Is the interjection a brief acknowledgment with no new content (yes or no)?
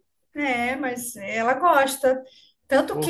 yes